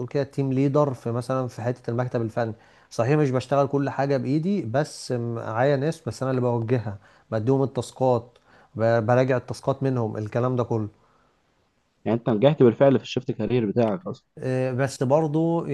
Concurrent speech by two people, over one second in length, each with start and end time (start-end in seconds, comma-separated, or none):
none